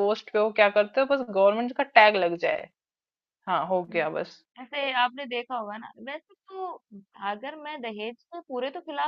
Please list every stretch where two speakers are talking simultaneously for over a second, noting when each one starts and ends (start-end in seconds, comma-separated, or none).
none